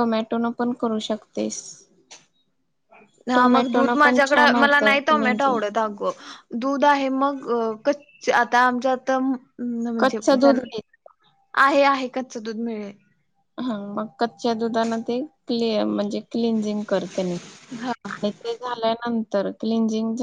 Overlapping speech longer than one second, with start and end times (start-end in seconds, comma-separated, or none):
3.4-5.6